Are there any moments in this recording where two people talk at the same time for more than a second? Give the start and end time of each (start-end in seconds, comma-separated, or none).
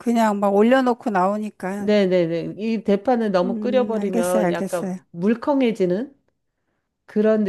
3.4-5.0